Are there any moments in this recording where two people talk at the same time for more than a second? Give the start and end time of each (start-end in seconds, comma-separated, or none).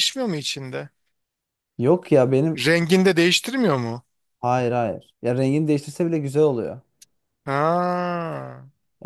none